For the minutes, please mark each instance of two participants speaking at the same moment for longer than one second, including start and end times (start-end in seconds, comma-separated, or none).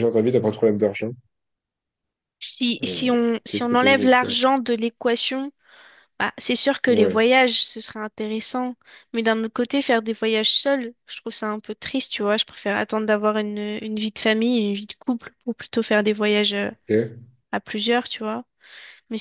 2.8-4.3